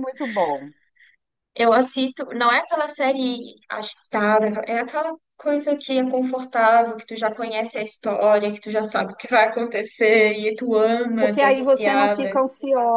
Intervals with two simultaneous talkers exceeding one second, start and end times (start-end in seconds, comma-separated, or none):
11.2-12.4